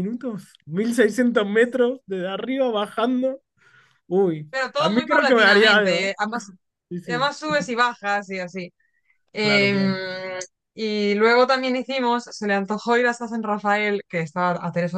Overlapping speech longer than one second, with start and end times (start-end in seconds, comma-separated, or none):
4.5-6.1